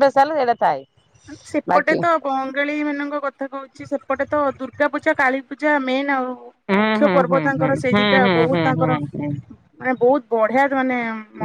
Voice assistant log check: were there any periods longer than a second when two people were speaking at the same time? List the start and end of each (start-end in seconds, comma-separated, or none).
6.8-9.3